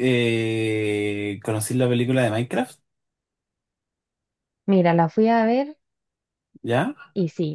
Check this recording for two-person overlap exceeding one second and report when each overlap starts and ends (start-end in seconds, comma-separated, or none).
none